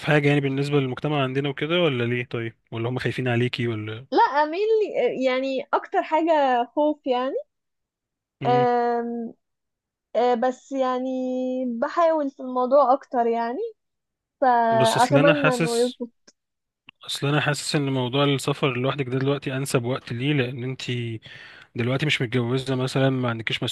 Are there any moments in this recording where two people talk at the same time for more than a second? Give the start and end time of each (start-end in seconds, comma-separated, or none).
14.7-16.0